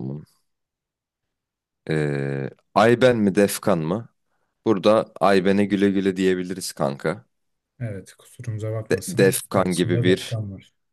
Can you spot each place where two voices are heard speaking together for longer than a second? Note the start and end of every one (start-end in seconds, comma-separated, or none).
8.9-10.4